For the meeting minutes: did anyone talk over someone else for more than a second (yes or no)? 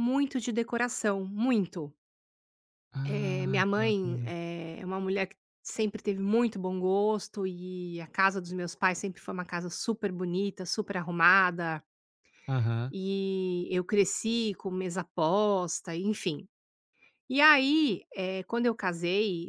yes